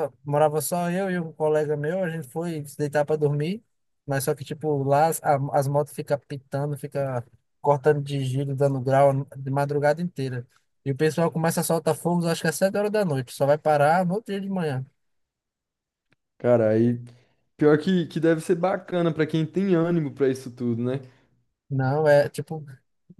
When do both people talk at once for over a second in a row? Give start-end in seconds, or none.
none